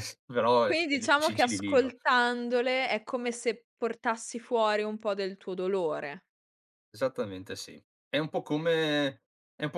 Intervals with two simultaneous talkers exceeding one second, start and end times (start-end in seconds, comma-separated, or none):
0.6-1.9